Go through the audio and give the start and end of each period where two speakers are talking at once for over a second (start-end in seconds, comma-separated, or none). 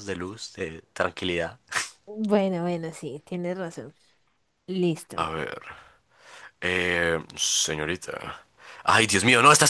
none